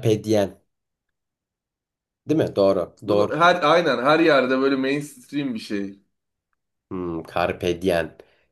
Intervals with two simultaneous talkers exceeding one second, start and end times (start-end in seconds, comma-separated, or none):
none